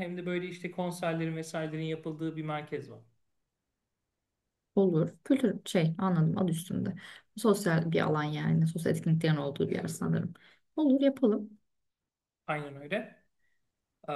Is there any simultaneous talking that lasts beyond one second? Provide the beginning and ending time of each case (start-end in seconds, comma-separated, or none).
none